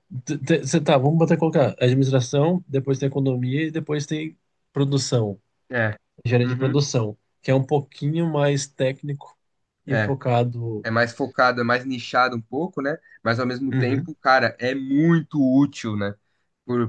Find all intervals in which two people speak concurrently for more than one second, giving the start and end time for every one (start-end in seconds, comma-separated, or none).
none